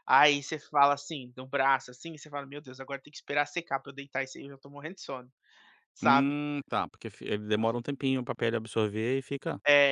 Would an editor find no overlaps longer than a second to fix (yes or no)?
yes